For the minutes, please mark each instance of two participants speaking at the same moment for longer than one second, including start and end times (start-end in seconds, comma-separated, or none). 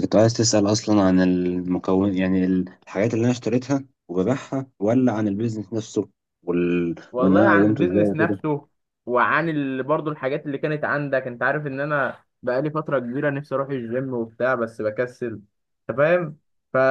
7.1-8.4